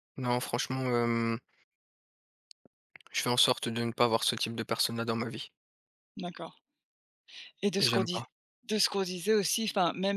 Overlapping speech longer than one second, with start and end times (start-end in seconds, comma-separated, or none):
none